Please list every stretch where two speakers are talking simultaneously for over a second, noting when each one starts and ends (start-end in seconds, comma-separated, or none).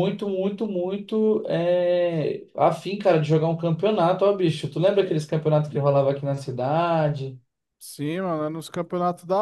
none